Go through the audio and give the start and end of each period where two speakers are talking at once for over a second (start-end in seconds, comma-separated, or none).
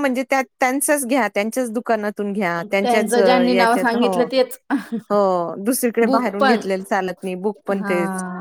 2.7-4.1